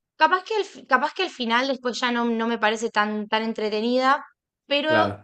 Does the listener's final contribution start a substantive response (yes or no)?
no